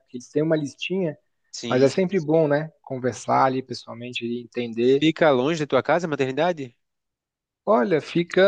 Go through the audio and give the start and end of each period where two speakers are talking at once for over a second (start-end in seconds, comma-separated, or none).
none